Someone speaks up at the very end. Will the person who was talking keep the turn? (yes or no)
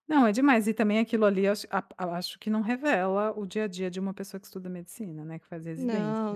no